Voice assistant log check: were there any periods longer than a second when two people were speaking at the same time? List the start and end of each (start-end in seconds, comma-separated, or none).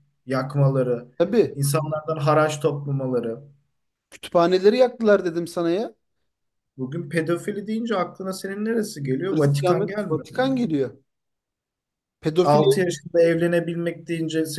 9.3-10.5